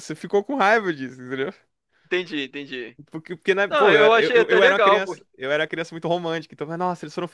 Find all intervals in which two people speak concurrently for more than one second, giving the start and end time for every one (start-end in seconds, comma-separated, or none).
3.7-5.2